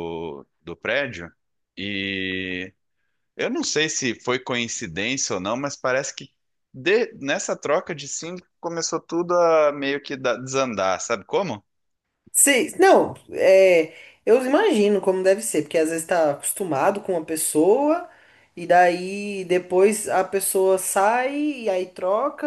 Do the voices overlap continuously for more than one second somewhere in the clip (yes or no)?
no